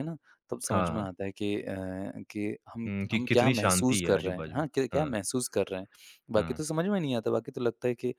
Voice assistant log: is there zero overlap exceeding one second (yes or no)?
no